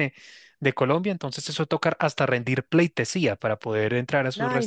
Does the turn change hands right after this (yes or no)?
yes